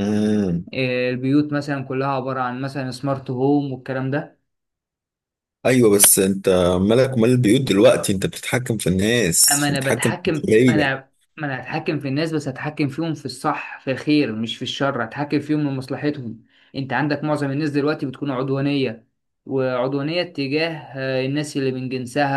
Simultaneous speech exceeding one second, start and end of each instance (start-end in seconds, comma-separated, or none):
9.5-10.9